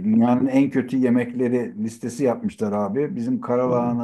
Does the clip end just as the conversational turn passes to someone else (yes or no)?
no